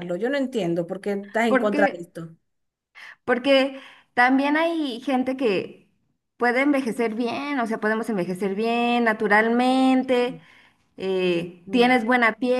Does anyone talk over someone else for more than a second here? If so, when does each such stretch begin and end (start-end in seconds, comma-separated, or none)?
none